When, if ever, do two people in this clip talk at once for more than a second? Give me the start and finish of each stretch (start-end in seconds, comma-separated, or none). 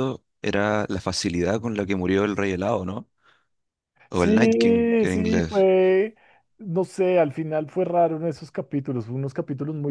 4.1-5.7